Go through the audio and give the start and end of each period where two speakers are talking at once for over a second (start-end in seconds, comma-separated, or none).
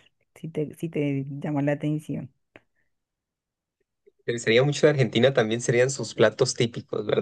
none